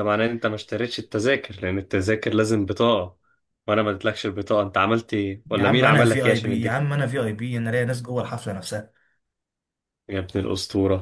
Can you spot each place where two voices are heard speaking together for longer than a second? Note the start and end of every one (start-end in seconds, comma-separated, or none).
5.5-6.8